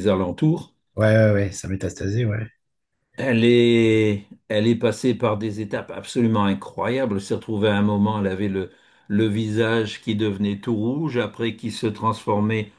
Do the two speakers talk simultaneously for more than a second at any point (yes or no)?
no